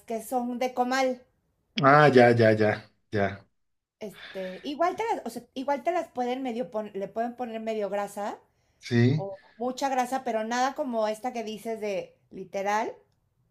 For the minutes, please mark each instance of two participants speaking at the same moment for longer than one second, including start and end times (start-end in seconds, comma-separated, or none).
none